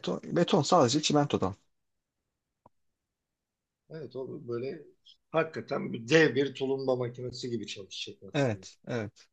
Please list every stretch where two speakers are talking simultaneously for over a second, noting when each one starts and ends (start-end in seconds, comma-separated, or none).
none